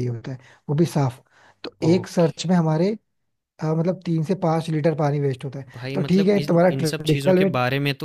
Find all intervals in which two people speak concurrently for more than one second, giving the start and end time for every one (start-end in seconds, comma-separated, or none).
5.7-7.5